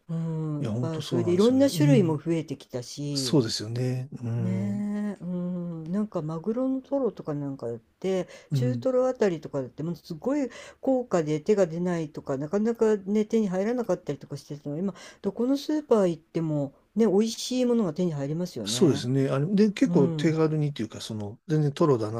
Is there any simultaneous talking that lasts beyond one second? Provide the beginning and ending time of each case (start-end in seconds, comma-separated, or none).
0.6-2.2